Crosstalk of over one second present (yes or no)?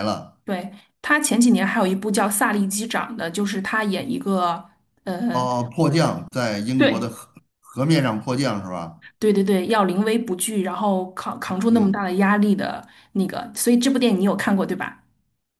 no